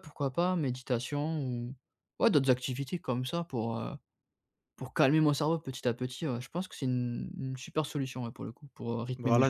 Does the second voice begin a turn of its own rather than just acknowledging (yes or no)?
yes